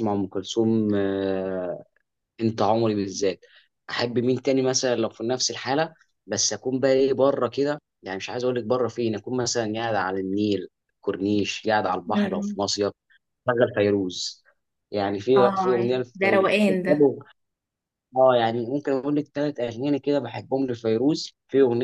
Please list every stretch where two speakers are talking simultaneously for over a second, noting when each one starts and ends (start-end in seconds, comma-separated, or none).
15.4-16.9